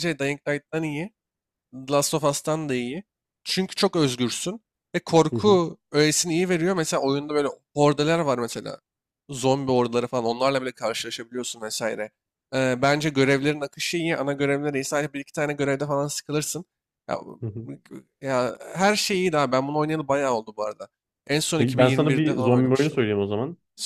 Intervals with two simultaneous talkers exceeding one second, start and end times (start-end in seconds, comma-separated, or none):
21.6-23.0